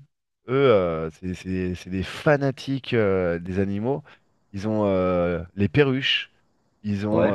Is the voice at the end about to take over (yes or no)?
no